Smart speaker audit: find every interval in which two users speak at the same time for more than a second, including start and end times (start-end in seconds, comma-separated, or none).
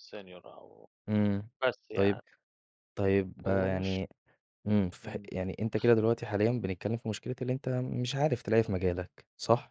none